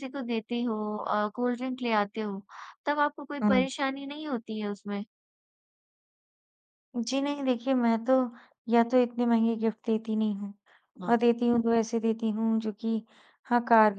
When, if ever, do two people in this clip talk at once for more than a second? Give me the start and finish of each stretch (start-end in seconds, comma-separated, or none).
none